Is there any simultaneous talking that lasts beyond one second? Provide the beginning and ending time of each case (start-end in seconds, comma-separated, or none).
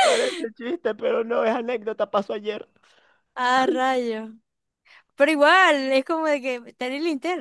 none